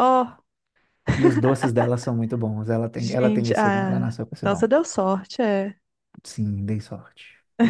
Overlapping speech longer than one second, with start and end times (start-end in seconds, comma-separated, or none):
3.0-4.6